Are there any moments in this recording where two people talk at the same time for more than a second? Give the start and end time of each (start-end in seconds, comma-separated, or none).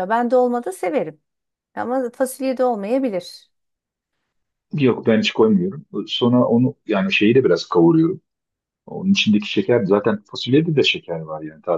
none